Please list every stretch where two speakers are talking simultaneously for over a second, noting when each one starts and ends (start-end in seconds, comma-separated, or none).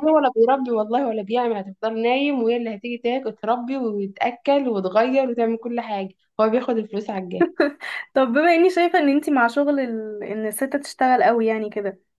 none